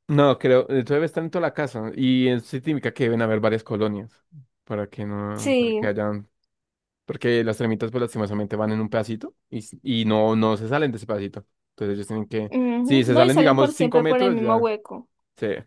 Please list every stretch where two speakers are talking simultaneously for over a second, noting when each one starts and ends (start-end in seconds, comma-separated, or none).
12.5-14.7